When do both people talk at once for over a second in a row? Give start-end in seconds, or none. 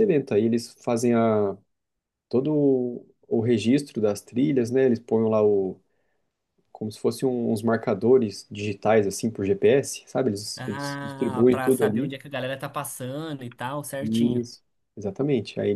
10.6-12.1